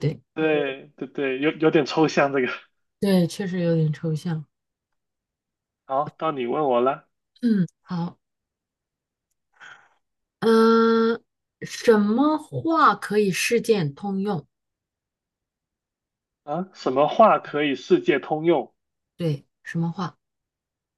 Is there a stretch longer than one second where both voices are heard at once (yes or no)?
no